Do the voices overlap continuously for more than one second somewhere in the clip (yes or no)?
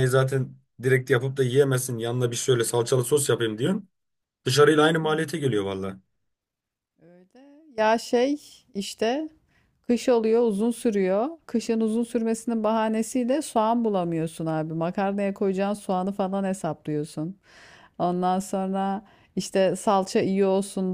no